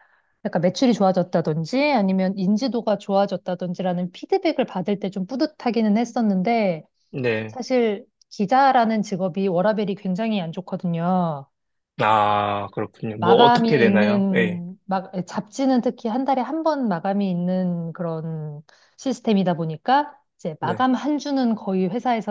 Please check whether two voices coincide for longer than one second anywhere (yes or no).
yes